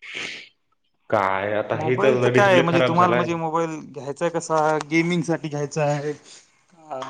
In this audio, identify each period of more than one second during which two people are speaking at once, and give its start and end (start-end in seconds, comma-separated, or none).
1.8-3.2